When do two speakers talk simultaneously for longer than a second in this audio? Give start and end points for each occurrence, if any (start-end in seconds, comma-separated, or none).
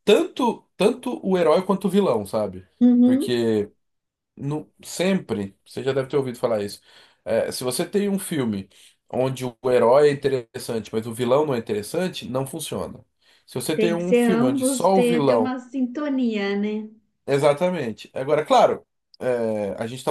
13.7-15.6